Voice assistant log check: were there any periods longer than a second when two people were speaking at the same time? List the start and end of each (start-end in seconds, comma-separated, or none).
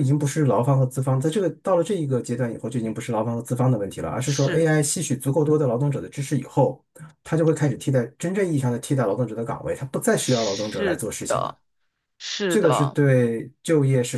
10.2-11.6